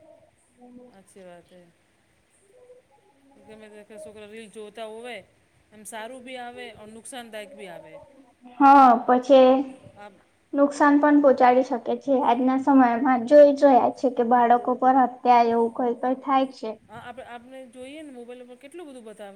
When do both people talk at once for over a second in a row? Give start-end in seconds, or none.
none